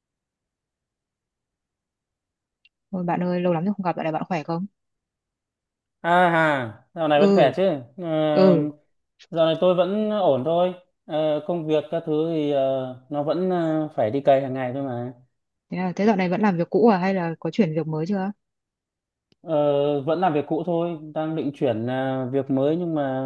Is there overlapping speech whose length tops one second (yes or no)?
no